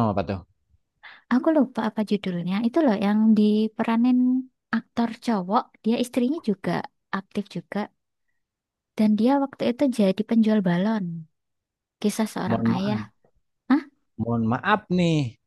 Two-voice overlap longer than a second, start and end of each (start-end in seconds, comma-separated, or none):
none